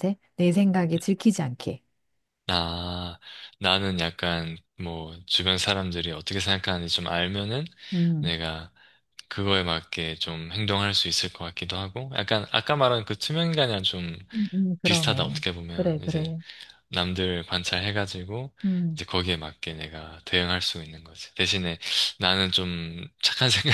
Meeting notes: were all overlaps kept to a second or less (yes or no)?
no